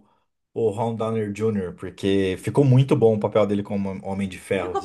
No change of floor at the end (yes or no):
no